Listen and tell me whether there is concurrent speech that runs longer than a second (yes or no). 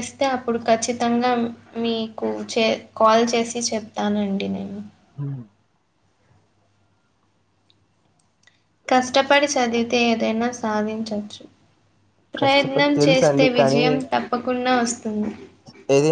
yes